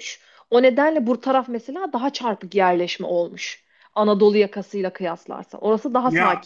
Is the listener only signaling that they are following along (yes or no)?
no